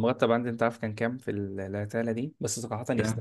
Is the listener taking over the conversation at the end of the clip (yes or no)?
no